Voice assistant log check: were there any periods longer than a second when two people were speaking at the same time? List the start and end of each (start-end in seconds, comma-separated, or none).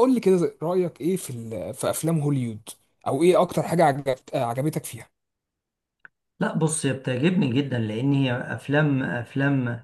none